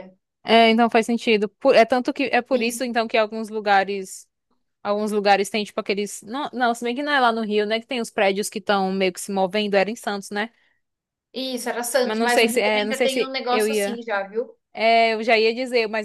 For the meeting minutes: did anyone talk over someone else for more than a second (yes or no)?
yes